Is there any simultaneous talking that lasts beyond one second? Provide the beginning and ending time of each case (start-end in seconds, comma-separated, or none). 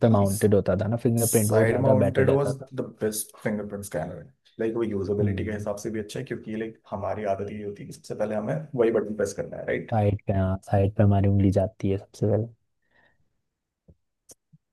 1.2-2.7